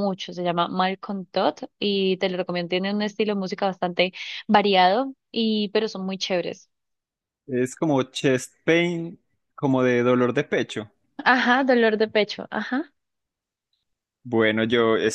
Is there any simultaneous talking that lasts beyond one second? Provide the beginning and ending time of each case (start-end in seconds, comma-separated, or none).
none